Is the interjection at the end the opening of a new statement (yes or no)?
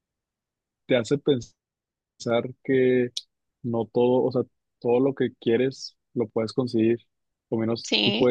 no